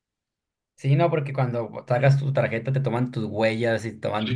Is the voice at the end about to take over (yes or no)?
yes